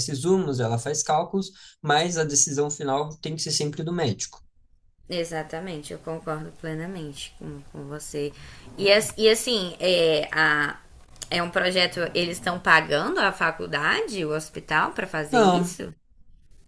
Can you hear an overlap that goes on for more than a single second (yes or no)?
no